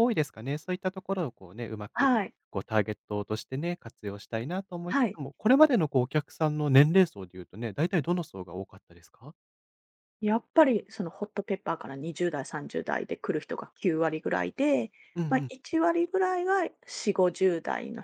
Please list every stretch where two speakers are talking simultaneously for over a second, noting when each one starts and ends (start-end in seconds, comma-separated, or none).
none